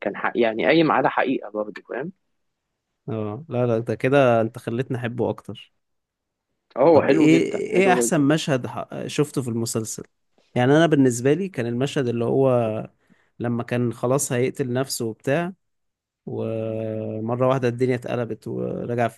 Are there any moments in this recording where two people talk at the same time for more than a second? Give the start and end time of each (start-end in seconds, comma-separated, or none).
6.9-8.3